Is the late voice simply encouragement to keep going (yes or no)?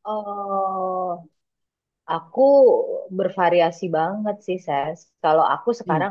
yes